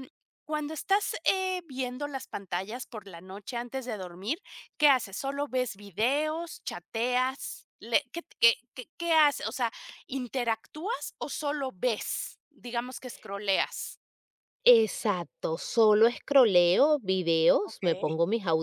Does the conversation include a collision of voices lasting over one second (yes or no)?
no